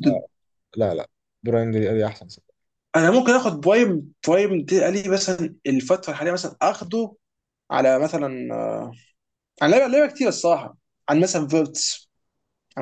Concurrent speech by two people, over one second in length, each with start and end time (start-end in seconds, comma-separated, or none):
none